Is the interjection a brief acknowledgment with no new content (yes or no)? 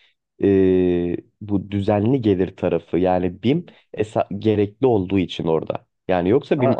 yes